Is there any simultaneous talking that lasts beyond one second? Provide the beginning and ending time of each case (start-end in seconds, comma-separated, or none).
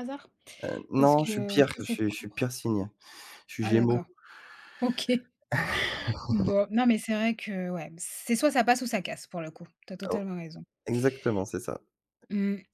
1.0-2.4